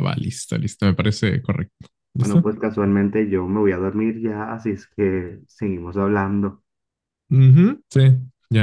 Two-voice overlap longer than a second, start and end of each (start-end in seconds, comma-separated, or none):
none